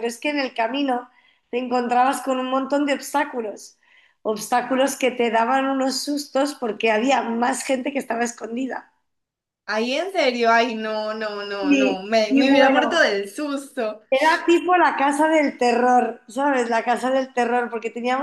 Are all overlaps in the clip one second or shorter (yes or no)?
no